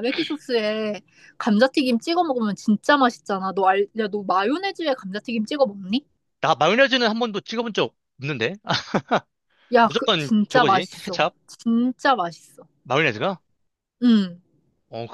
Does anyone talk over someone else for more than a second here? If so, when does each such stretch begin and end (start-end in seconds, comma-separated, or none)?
9.8-11.3